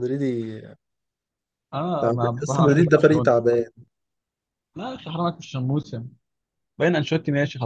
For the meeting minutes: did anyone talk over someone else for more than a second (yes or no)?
yes